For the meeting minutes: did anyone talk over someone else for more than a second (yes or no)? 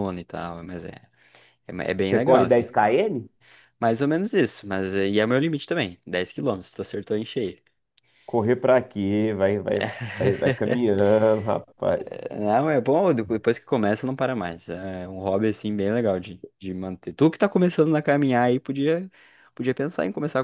no